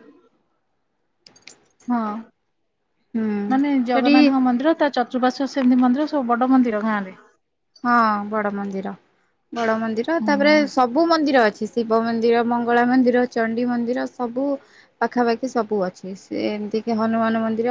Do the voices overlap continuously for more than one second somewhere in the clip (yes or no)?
no